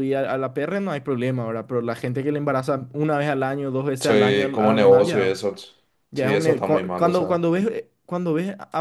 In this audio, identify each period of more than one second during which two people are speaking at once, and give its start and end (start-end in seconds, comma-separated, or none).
4.0-5.3, 6.2-7.5